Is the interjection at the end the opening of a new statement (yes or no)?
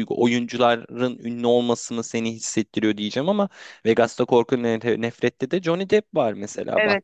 yes